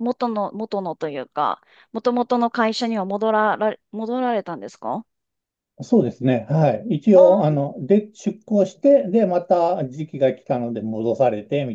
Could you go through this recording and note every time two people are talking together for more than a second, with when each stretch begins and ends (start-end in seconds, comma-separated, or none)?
none